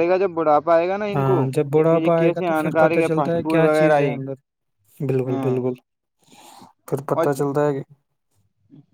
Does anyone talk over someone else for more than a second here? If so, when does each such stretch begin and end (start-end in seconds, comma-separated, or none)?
1.9-4.2